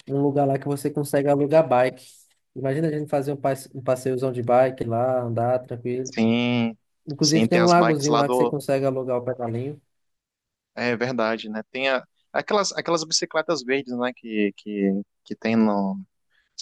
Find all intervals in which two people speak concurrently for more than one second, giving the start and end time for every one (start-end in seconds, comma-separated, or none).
7.2-8.6